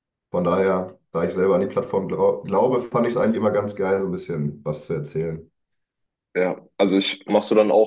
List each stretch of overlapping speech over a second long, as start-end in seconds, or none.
none